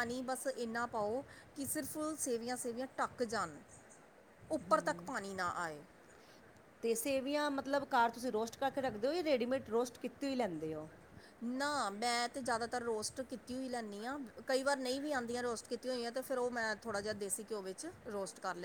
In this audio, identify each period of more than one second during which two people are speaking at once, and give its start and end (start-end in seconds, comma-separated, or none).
none